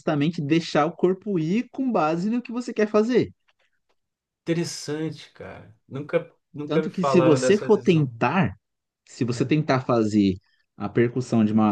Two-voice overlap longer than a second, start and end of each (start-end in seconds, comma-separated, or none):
6.7-8.1